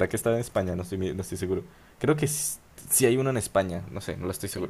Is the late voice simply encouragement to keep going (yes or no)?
no